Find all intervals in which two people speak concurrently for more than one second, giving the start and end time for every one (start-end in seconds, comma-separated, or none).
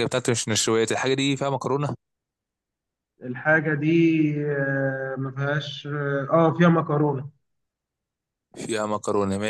none